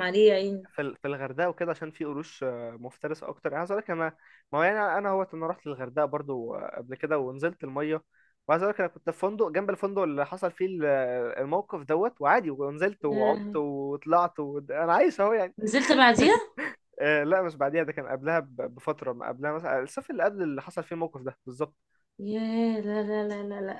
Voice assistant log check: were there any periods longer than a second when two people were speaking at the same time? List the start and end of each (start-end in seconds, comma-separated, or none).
none